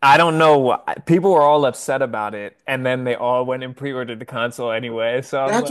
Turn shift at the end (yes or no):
yes